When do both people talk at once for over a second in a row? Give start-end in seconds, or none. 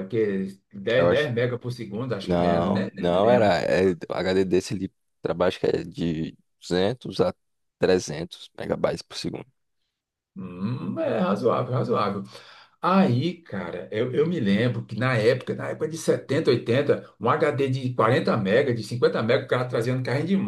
2.2-3.5